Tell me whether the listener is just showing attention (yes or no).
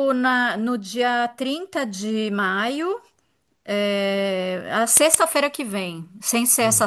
yes